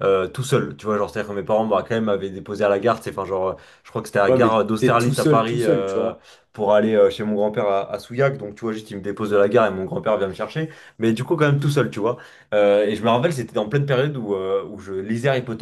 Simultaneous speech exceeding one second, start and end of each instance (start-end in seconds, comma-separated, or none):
4.3-6.1